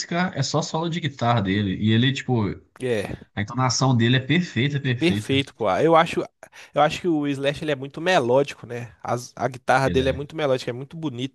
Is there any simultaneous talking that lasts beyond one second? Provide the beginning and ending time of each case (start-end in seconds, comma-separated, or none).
none